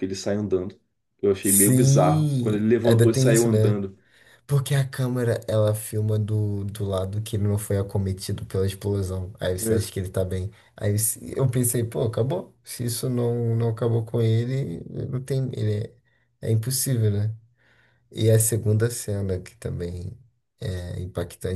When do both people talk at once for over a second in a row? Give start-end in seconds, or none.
1.4-3.8